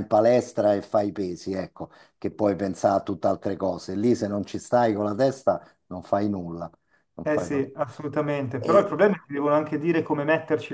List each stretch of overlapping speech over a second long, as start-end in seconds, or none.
none